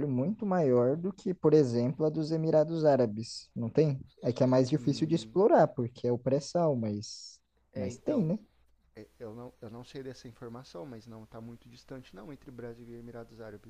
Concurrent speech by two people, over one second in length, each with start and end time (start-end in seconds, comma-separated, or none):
none